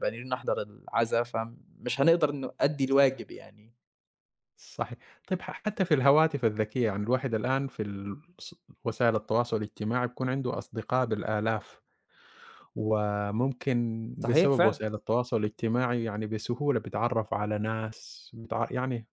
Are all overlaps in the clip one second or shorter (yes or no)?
yes